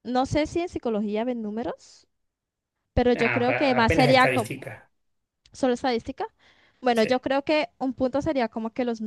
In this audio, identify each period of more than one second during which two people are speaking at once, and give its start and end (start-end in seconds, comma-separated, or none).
3.1-4.5